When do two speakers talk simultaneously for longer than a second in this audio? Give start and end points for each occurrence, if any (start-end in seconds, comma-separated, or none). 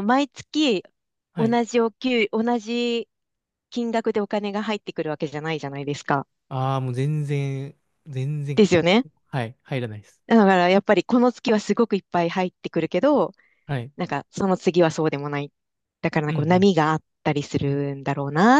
none